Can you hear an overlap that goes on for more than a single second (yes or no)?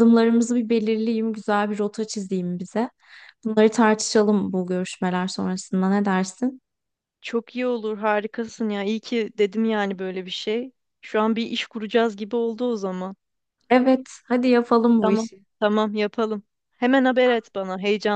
no